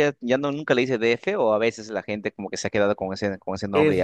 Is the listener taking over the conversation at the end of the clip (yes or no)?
yes